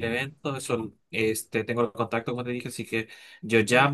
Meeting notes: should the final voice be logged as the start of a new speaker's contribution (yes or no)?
no